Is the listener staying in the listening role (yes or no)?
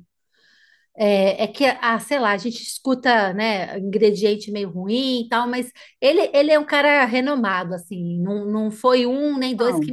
yes